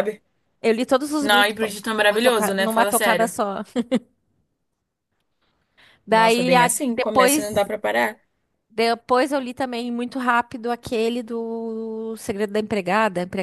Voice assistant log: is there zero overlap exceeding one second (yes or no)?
no